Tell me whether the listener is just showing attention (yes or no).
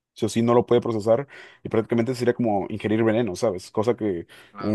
yes